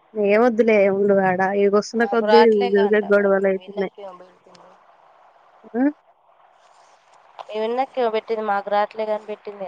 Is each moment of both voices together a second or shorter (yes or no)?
no